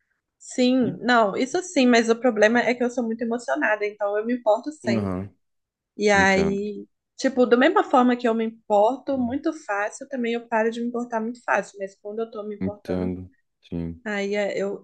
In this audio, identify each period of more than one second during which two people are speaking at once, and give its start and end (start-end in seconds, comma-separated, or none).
none